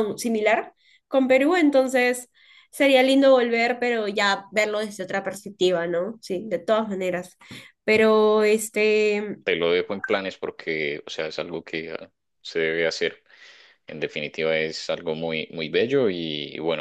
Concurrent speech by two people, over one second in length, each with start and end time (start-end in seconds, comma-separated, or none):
none